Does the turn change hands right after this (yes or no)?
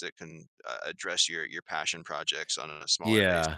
yes